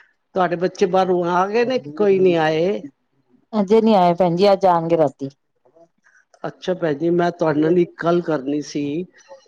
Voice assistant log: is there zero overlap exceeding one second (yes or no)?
yes